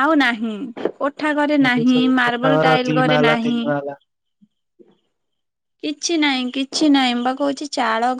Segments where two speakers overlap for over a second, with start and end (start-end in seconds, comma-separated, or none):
1.7-3.6